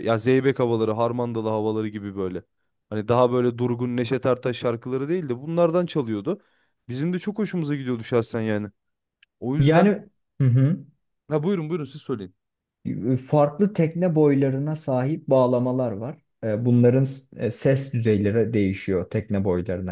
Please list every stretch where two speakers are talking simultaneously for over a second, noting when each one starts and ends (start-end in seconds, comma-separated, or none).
none